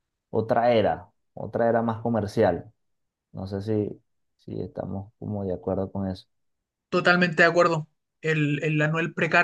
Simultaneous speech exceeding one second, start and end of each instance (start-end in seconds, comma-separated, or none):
none